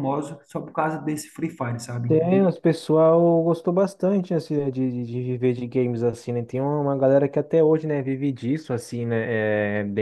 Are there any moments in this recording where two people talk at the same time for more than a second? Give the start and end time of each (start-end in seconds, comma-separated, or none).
none